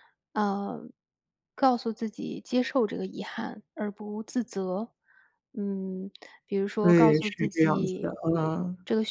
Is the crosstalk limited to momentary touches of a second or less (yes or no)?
no